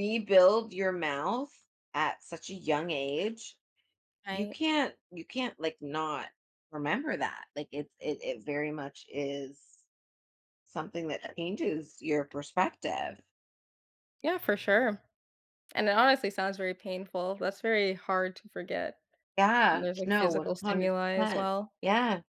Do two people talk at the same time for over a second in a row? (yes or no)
yes